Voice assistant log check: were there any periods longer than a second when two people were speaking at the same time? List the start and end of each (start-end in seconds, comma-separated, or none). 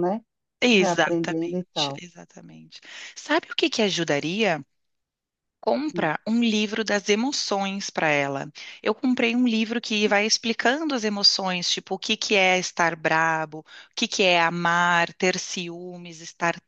0.7-2.0